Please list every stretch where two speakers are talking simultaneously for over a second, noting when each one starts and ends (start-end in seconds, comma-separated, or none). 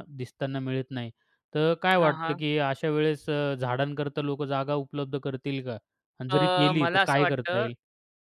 6.3-7.7